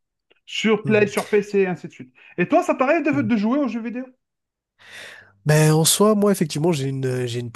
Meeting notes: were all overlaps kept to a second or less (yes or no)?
yes